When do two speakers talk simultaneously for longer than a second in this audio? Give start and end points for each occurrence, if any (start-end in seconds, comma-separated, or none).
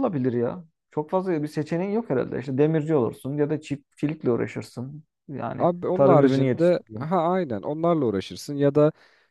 5.6-7.1